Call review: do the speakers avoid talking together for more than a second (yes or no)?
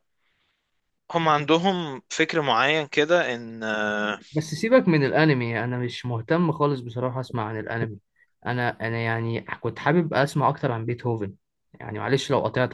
yes